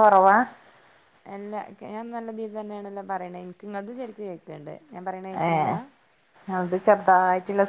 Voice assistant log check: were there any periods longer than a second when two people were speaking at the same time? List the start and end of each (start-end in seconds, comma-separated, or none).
none